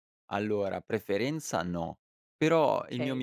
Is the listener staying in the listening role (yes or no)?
yes